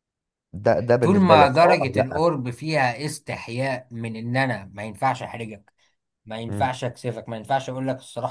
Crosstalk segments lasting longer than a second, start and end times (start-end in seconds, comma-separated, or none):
1.0-2.3